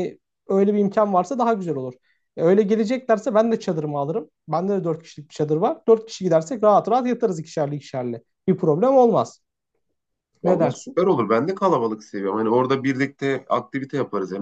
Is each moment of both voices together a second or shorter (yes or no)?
yes